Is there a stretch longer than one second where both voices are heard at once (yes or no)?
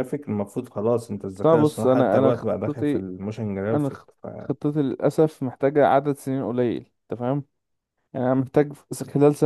yes